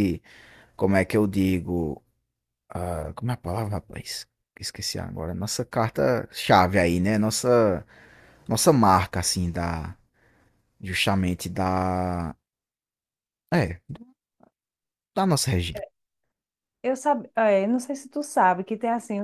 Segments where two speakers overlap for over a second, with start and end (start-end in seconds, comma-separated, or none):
none